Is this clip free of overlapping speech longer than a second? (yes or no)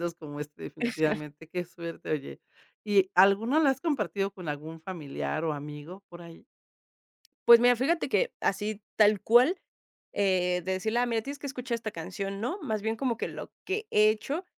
yes